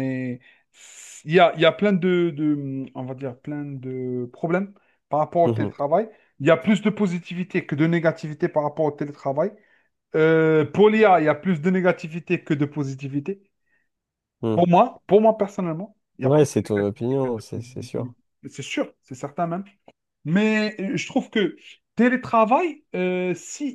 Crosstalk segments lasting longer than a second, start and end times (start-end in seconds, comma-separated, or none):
16.2-18.1